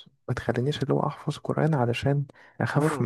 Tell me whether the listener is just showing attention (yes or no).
yes